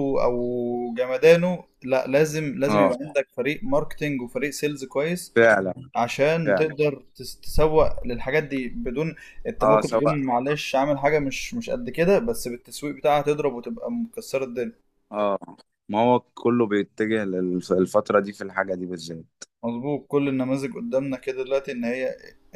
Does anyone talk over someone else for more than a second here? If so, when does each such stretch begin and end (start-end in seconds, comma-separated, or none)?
none